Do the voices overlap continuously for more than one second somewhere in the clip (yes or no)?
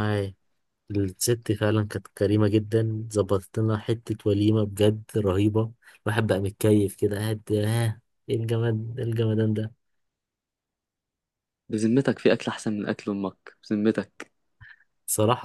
no